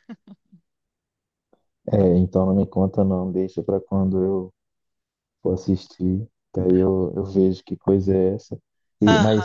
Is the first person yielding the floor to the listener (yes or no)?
no